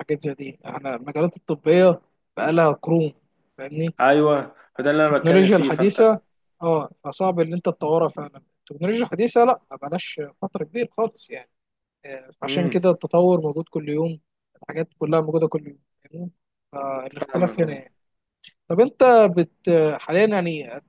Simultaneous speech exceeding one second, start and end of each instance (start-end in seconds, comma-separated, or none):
4.8-6.1